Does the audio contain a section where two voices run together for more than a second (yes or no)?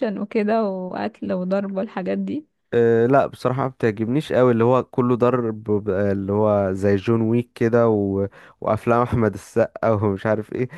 no